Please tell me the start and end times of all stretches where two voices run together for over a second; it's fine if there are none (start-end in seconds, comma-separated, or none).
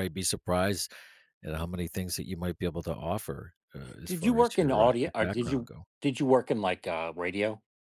4.0-5.8